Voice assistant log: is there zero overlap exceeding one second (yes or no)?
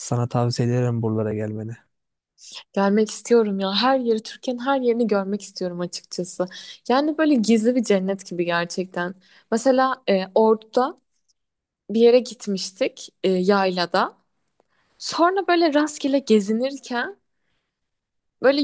yes